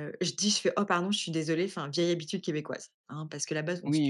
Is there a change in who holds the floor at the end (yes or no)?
no